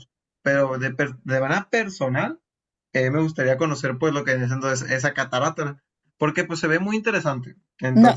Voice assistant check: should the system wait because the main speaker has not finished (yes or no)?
no